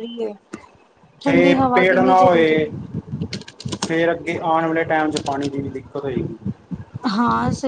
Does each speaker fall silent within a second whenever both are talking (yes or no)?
no